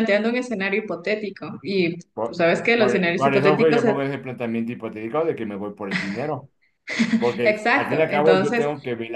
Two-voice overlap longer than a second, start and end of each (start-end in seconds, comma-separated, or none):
2.1-3.8, 7.4-8.7